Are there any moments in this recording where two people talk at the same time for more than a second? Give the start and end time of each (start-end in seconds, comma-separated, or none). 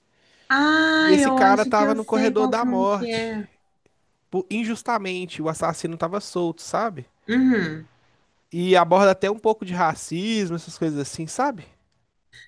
1.0-3.4